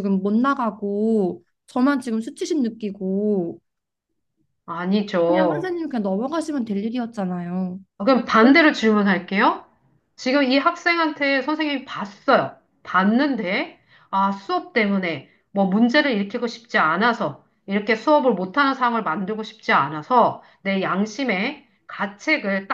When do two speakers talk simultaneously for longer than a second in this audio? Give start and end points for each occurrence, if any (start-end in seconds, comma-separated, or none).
none